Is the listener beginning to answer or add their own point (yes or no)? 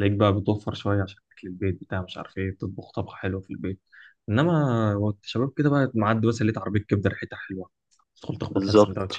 yes